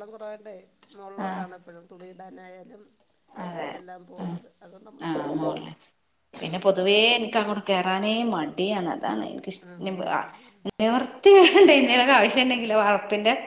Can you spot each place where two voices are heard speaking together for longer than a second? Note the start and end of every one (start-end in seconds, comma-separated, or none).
none